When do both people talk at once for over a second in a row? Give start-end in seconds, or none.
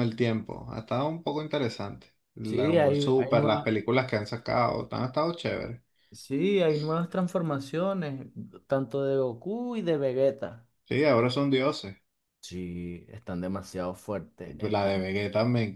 2.4-3.7